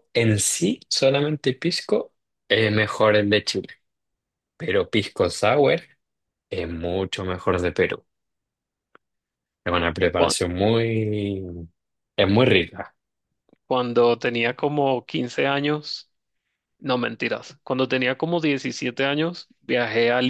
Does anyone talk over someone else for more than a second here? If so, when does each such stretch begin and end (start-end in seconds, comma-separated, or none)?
none